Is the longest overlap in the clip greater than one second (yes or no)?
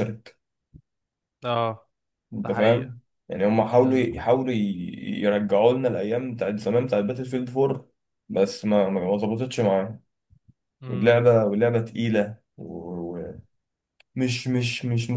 no